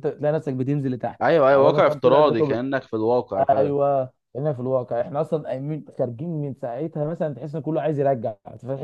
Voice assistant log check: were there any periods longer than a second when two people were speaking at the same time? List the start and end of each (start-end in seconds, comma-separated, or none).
1.2-2.6